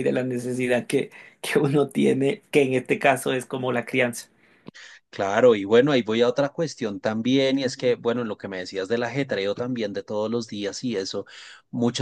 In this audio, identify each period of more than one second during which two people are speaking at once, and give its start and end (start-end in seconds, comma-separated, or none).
none